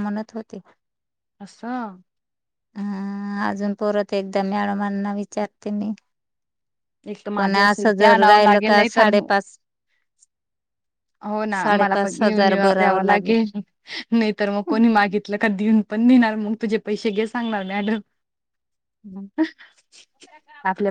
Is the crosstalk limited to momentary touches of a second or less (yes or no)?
no